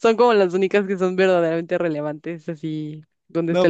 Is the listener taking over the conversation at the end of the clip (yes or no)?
yes